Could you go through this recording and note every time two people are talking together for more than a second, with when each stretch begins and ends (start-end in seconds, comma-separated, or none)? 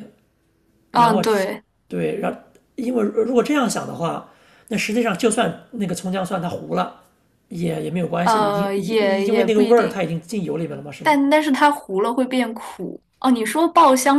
8.2-10.0